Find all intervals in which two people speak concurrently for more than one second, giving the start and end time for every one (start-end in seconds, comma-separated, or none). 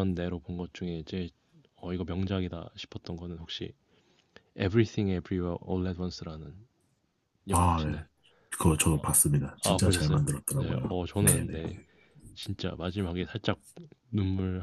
9.6-11.5